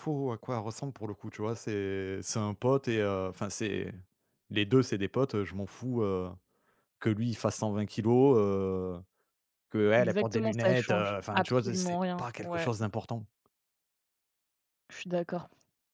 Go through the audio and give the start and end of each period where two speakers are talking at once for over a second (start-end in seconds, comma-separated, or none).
9.9-12.7